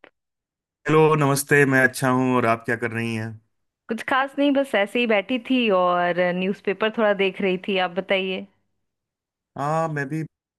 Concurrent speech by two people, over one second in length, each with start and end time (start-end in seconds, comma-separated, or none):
none